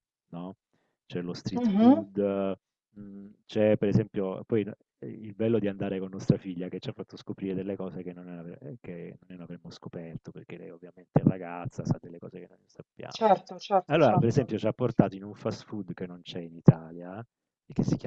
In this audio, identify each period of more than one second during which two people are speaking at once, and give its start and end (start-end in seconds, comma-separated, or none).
none